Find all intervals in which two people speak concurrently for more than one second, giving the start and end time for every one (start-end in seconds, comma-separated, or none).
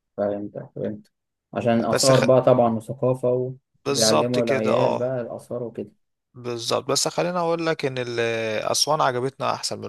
3.9-5.1